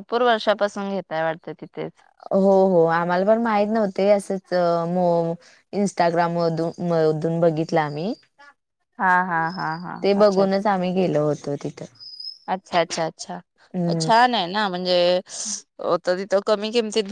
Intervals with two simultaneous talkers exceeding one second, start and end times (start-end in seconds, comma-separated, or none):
none